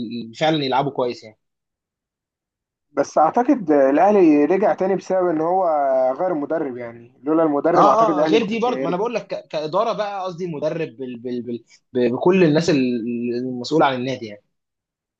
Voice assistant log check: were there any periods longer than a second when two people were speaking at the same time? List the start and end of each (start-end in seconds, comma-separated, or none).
7.7-9.0